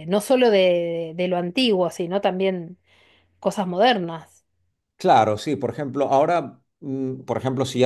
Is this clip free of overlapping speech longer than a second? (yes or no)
yes